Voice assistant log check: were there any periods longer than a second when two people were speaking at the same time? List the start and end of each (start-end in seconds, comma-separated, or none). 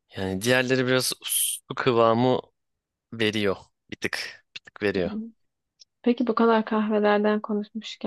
none